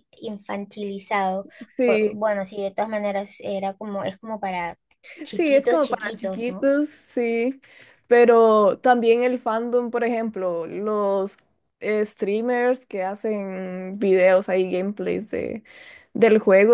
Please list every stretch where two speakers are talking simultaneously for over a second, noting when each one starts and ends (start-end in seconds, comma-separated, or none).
5.3-6.7